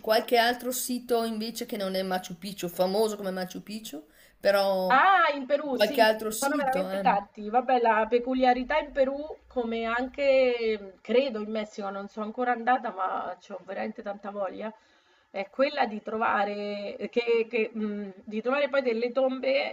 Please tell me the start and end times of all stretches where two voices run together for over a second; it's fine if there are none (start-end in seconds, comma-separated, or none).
5.7-7.2